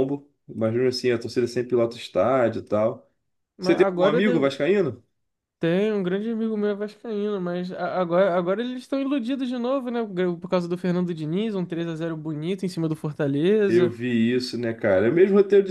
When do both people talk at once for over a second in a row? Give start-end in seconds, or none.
none